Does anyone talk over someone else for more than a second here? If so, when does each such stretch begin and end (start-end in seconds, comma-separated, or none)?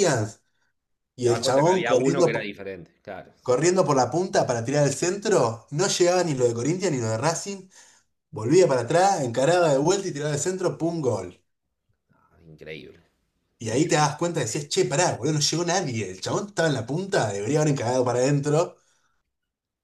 1.2-2.5